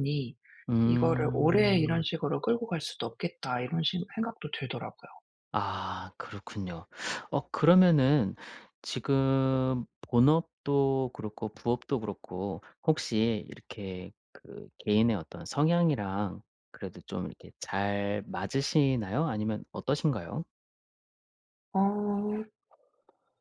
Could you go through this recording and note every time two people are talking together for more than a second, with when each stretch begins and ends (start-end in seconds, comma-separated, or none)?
0.8-2.0